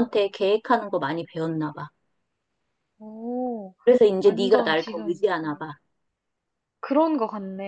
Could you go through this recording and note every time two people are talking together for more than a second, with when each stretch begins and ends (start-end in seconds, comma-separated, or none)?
4.2-5.6